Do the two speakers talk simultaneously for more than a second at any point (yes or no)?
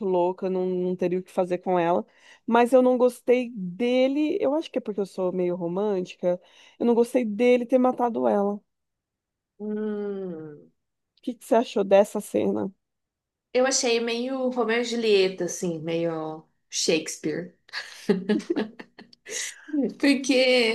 no